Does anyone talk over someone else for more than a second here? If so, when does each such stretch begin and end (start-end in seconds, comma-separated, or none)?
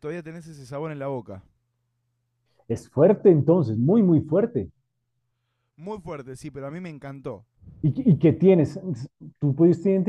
none